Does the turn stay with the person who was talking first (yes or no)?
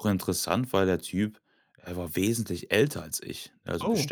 yes